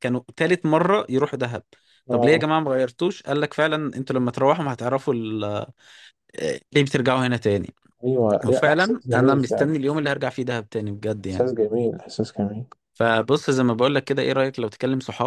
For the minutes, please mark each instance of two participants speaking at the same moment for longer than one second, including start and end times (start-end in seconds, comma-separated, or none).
8.4-9.7